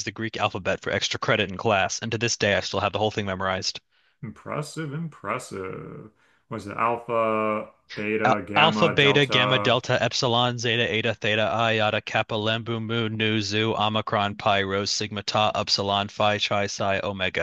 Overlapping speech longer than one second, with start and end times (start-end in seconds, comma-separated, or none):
8.2-9.8